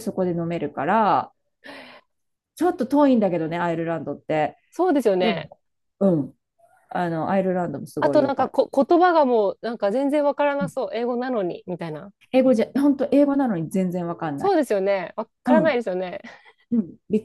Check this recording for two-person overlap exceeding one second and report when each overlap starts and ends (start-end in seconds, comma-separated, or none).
none